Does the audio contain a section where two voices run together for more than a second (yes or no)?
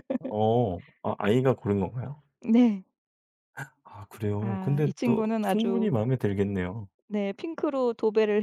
yes